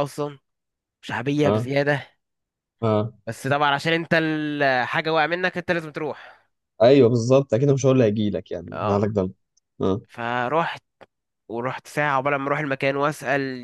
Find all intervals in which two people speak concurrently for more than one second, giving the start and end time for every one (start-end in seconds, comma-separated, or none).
none